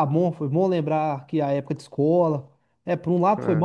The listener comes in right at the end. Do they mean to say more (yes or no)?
no